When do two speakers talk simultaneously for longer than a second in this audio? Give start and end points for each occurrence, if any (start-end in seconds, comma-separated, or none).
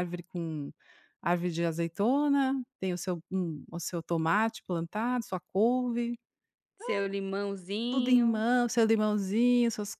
none